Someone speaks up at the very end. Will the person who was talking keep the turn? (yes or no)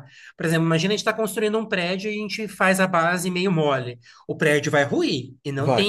yes